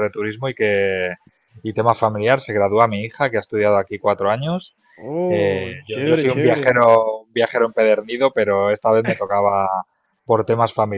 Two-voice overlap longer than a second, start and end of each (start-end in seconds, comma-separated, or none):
5.3-6.8